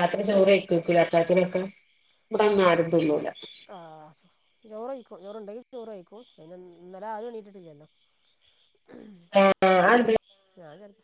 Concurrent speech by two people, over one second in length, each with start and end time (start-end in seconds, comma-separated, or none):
none